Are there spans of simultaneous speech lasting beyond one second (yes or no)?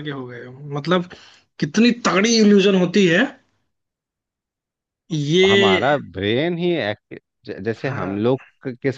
no